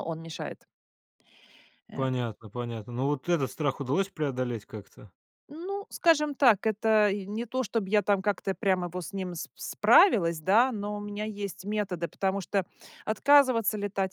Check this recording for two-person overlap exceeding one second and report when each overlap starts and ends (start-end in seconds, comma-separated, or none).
none